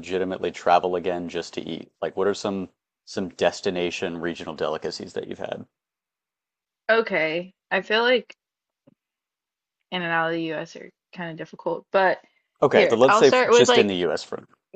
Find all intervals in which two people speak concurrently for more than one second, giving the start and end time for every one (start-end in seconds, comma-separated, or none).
12.7-14.0